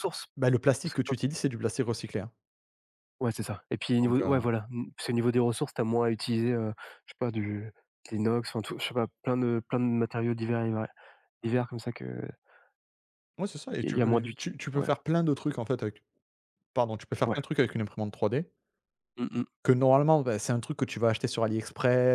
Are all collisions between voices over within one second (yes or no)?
no